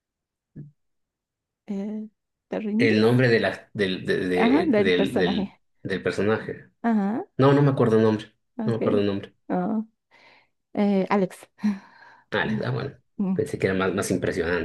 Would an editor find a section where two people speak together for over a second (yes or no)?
yes